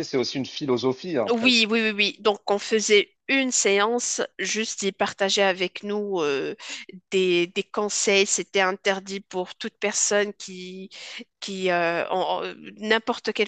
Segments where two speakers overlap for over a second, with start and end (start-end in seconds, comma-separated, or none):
none